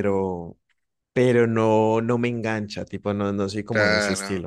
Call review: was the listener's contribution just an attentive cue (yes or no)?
no